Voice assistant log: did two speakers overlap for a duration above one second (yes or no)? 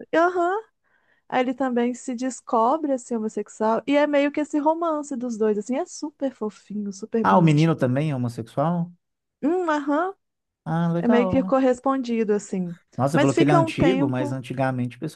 yes